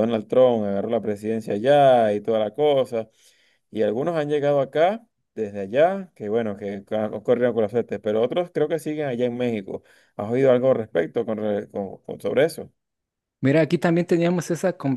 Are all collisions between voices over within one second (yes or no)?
yes